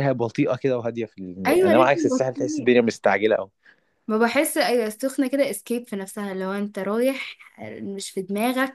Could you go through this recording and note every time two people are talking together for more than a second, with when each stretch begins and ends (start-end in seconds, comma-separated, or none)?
1.5-2.7